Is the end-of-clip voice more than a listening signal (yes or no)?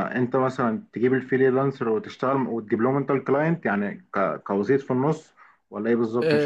yes